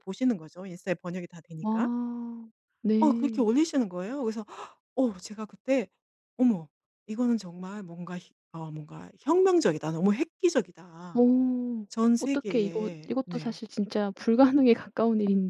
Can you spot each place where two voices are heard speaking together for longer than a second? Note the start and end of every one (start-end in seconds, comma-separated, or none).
11.9-13.6